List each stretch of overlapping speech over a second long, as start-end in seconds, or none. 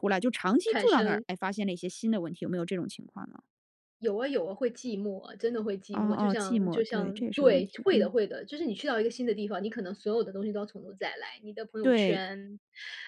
5.9-8.1